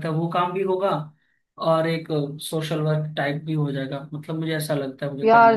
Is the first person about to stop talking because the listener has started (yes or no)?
yes